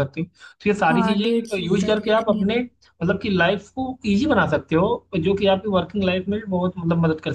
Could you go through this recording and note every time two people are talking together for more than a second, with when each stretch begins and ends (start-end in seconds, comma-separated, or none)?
0.8-2.6